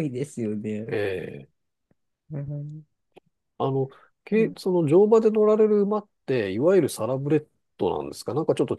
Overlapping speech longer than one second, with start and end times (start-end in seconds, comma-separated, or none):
none